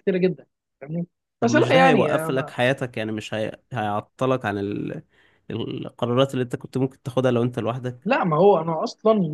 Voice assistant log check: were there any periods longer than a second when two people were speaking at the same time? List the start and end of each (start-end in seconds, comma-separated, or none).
1.4-2.7